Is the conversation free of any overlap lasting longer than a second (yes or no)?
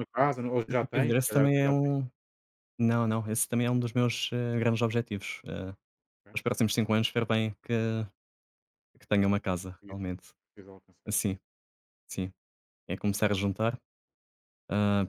no